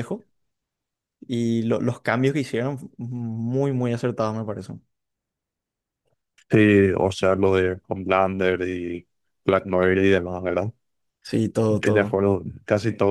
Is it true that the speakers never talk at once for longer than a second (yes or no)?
yes